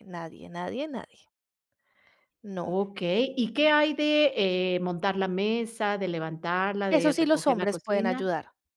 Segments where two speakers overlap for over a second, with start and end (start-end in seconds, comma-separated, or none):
6.9-8.3